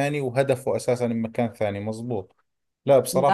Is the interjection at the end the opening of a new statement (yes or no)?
no